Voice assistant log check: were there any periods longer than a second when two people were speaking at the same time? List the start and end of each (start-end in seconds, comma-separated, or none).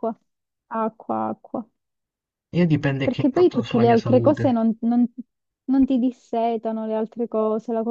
3.0-4.5